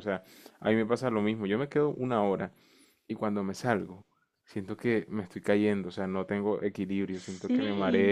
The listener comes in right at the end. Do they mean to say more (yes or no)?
no